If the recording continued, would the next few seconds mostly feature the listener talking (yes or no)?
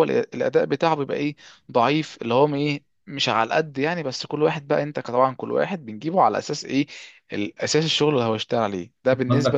yes